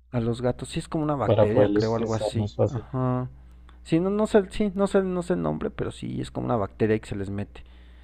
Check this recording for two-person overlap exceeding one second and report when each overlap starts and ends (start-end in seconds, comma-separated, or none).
1.2-2.9